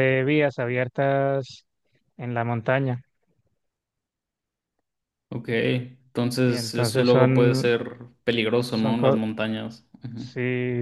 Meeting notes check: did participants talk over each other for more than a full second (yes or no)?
yes